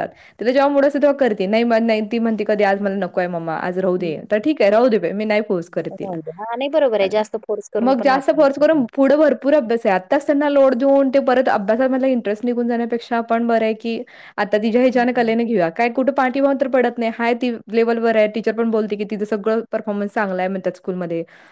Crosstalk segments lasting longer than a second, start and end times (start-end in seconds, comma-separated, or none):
none